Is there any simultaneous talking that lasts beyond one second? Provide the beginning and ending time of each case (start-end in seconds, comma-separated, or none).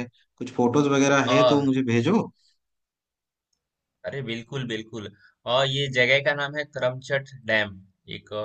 none